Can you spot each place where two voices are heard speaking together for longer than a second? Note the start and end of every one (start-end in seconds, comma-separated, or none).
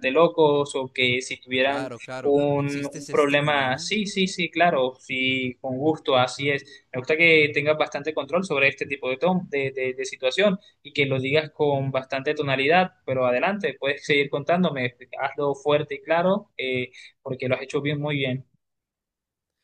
1.6-3.9